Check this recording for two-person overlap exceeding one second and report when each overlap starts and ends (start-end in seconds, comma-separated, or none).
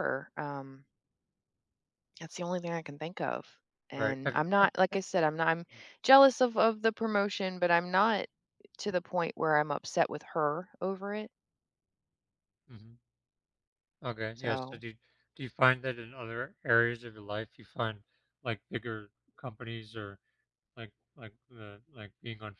none